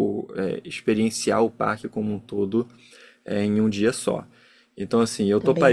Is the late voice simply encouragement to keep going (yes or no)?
yes